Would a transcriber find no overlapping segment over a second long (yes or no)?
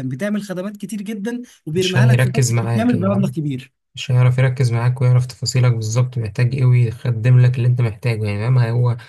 no